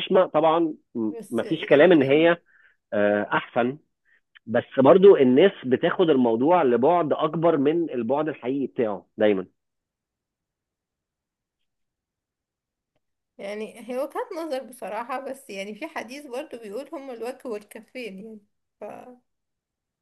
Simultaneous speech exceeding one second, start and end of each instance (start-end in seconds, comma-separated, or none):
1.1-2.3